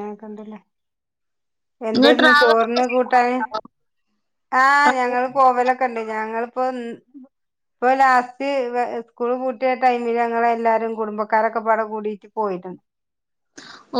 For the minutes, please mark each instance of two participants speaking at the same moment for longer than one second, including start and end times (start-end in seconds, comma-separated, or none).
1.9-3.4